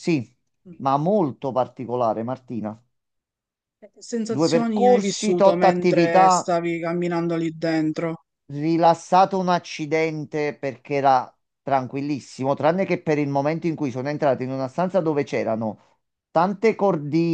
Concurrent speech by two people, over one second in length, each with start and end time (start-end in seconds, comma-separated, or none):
4.2-6.5